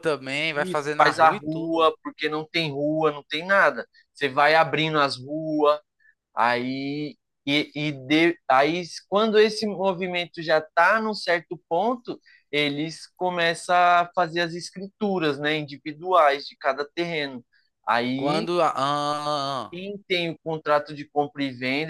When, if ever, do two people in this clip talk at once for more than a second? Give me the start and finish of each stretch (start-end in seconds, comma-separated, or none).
0.5-1.9